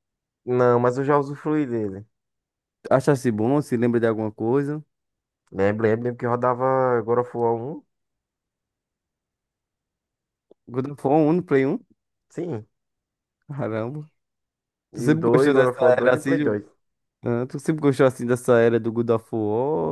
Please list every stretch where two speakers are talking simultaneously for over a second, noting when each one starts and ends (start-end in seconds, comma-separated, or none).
14.9-16.6